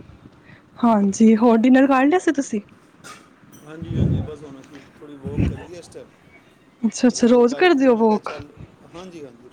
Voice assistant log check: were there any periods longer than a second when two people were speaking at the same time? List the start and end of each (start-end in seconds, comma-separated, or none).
7.0-8.3